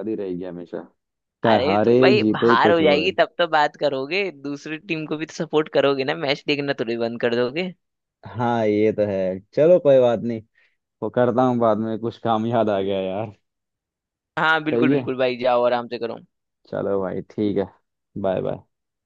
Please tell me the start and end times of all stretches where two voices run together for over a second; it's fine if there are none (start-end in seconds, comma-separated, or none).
1.5-3.1